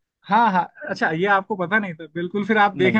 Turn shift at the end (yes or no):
no